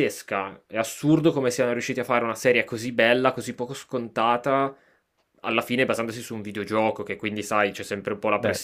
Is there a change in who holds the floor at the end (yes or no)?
no